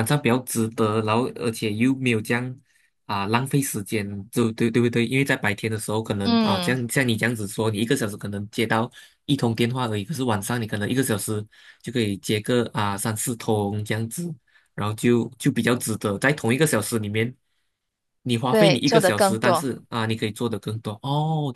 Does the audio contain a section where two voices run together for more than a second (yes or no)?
yes